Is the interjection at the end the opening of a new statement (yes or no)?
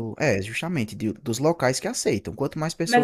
yes